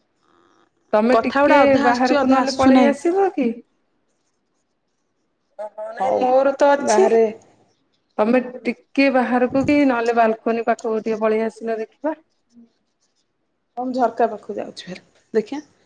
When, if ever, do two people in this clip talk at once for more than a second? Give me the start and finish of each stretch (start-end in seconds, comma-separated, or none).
1.1-2.9